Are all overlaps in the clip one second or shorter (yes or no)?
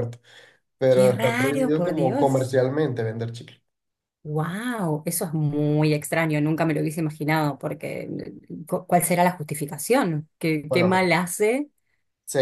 no